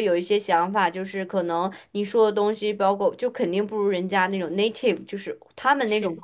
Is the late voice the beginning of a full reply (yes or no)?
no